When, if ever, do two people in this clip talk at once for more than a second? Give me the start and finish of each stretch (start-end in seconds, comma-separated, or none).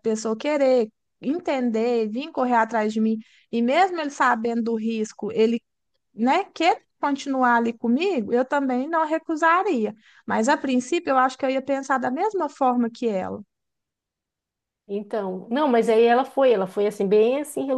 none